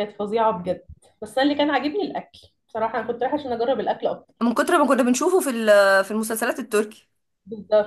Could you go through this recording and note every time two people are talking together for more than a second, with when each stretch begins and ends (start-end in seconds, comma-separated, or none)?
none